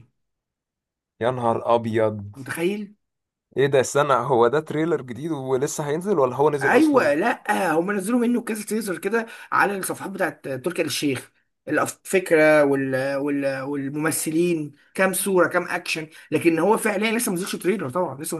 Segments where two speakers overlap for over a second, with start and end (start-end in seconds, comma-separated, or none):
none